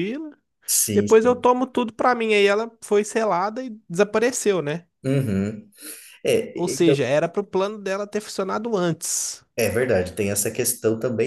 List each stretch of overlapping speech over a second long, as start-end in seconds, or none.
none